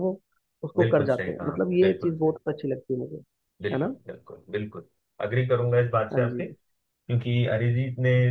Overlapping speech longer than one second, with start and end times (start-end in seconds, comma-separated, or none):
0.8-2.4